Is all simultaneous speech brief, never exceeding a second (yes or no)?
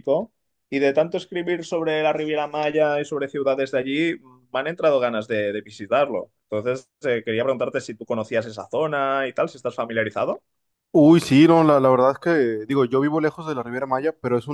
yes